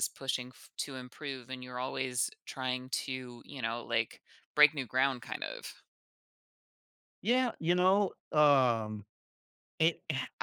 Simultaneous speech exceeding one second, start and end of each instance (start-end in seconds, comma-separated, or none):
none